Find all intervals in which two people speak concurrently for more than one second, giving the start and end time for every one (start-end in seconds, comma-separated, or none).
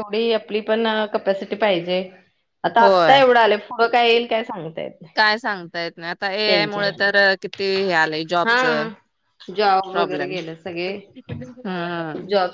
none